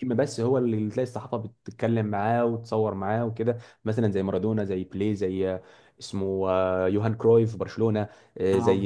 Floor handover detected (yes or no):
no